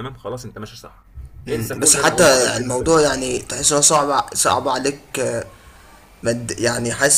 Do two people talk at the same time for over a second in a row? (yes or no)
yes